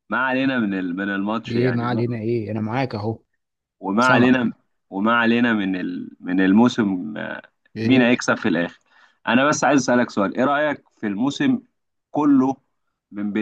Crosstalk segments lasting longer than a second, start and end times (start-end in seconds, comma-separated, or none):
none